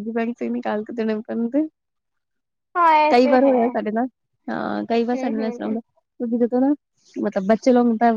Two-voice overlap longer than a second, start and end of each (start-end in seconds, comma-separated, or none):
none